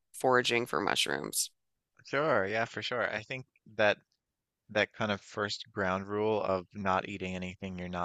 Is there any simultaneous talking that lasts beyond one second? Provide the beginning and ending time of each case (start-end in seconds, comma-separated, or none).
none